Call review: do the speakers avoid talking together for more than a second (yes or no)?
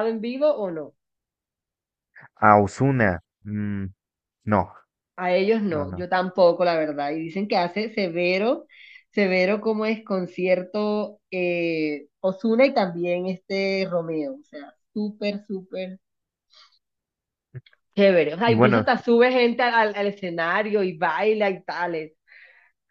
yes